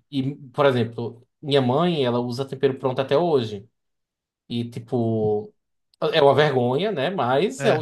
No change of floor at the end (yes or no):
yes